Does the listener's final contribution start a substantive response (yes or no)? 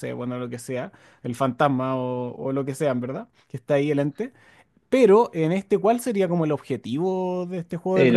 yes